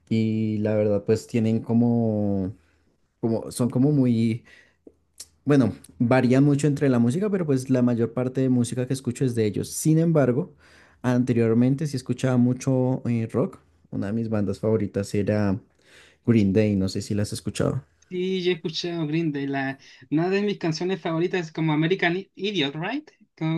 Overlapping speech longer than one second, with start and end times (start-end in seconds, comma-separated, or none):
none